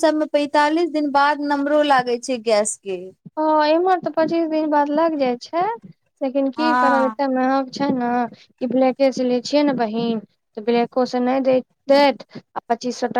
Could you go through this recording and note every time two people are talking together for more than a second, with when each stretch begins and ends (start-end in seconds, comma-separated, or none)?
none